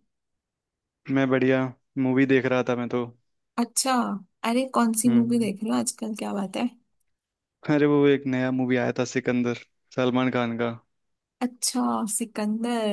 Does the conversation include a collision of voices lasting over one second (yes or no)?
no